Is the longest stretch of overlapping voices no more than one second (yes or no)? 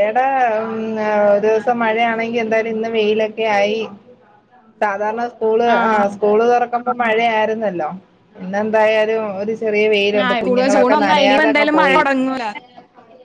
no